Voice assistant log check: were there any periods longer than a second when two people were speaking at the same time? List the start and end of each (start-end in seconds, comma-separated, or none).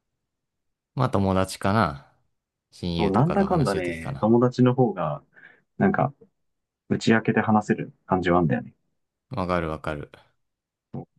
3.0-4.3